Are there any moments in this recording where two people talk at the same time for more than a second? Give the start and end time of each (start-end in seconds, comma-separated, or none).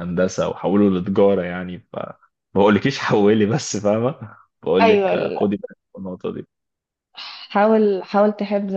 none